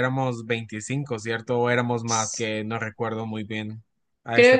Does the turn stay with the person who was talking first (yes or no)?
no